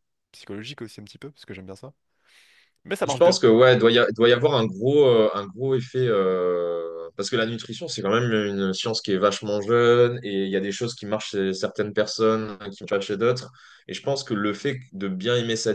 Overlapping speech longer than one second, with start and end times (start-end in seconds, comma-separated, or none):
none